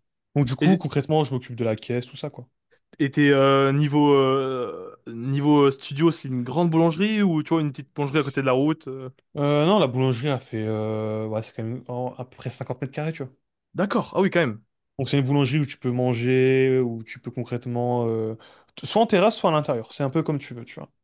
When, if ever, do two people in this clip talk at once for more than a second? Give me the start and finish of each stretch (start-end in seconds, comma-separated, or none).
none